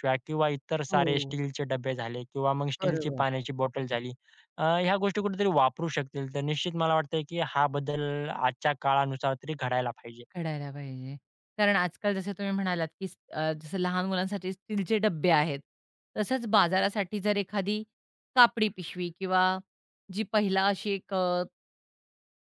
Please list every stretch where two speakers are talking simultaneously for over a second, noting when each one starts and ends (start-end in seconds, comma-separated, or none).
none